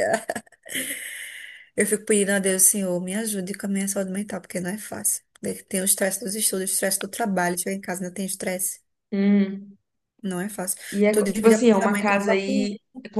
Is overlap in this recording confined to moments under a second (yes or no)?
no